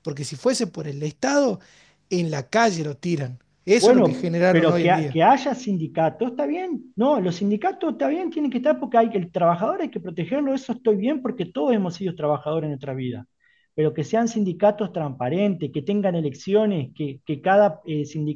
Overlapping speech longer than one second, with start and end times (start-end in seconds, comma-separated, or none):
3.8-5.2